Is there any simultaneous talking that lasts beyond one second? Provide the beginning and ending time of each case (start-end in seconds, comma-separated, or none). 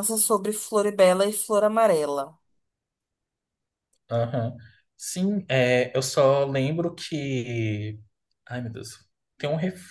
none